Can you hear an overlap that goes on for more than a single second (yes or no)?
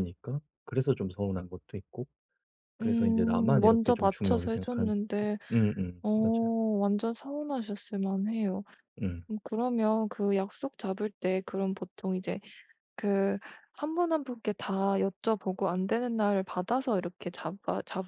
yes